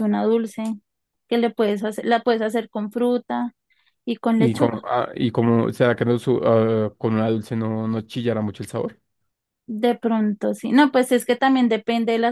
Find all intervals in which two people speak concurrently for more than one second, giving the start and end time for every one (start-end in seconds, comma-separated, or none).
none